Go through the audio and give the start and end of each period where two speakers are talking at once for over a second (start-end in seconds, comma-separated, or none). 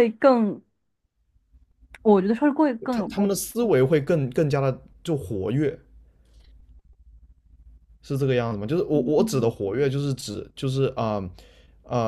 none